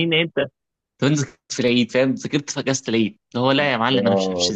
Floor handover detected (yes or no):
yes